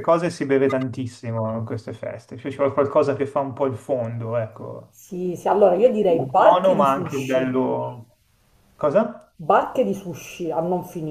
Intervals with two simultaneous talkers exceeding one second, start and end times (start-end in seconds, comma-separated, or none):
6.4-7.6